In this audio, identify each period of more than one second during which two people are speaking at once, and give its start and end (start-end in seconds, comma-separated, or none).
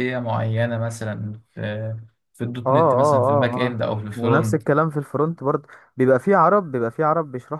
2.7-4.6